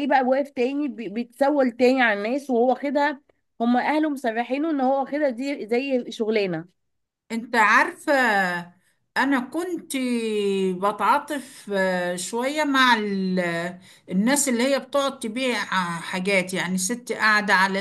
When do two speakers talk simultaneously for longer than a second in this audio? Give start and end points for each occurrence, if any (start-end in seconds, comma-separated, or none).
none